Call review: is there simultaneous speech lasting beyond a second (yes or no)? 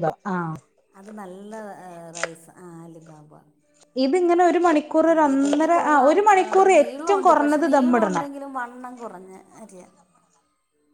yes